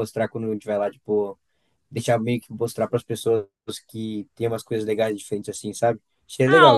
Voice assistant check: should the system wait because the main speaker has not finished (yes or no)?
no